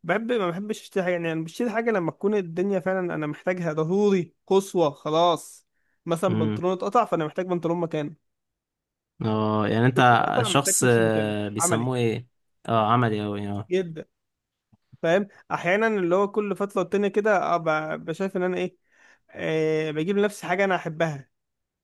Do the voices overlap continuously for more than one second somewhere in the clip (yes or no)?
yes